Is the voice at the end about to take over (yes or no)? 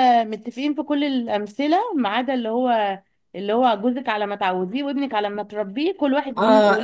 yes